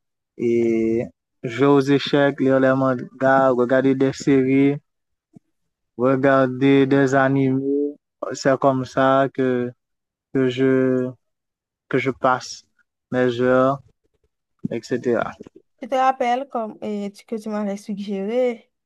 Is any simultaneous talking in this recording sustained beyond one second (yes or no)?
no